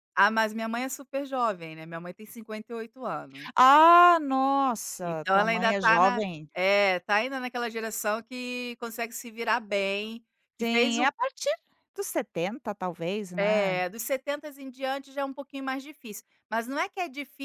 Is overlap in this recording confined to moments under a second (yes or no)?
no